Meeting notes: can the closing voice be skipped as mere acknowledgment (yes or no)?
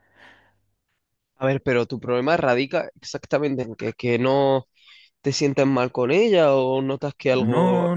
no